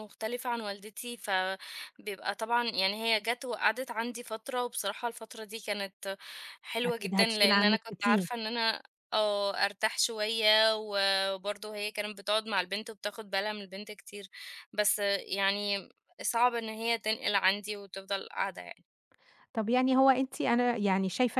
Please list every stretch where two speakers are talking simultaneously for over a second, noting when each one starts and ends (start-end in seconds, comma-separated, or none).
6.8-8.3